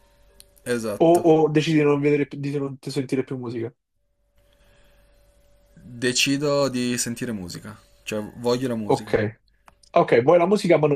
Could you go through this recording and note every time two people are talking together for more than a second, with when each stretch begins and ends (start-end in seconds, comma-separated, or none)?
none